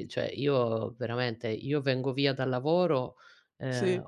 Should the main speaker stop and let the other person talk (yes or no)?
no